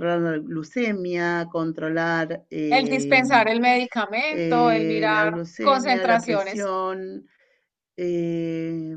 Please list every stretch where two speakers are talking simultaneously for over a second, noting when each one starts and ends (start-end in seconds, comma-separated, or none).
4.3-6.7